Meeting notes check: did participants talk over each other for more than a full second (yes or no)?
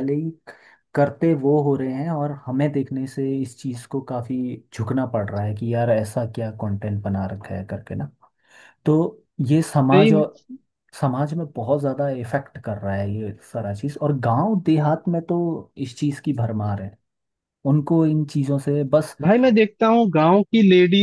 no